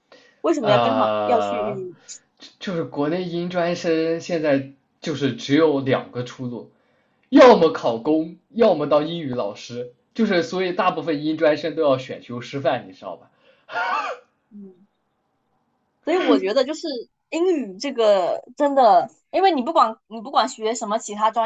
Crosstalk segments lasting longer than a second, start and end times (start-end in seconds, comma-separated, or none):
0.6-1.9